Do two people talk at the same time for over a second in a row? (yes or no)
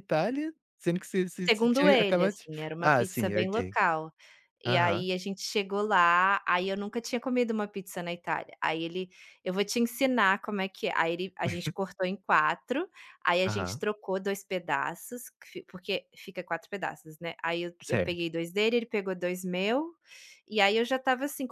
yes